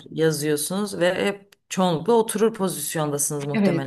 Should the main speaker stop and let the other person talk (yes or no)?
yes